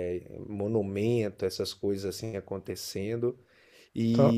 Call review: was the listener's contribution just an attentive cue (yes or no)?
yes